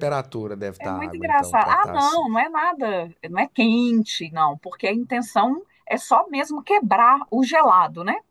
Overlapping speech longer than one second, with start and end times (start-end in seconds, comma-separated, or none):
0.8-2.3